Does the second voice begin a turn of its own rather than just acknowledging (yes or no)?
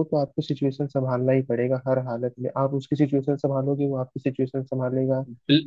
yes